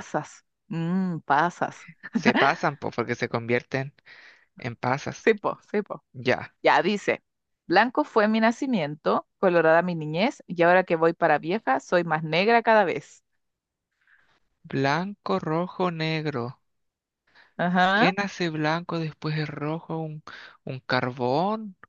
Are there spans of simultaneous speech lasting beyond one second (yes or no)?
no